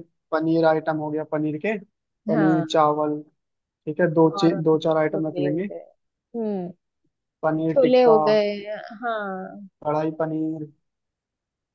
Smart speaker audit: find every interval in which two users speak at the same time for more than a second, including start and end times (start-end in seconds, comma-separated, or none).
4.4-5.7